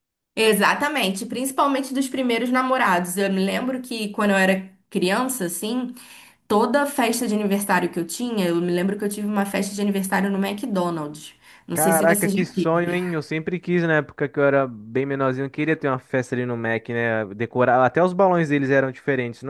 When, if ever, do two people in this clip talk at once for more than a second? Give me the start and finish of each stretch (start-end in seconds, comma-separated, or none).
11.7-12.9